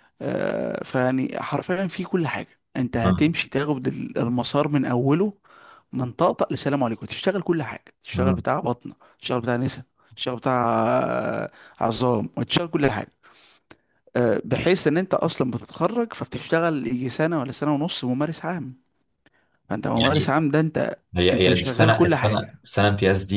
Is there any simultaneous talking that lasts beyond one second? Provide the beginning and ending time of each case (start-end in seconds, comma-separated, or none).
21.3-22.6